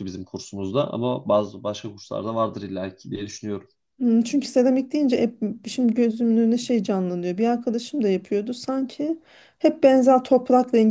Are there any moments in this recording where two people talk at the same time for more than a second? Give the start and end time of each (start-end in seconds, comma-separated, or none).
none